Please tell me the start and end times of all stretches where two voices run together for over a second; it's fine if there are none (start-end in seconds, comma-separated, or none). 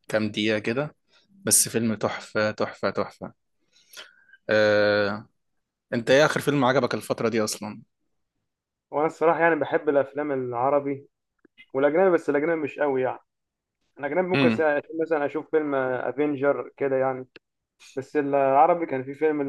none